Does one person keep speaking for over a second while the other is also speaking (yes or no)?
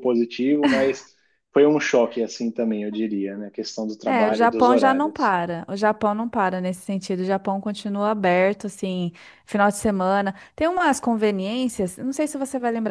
yes